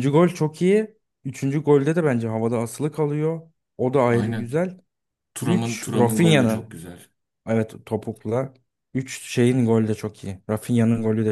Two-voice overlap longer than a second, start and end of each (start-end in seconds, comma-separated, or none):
5.4-6.8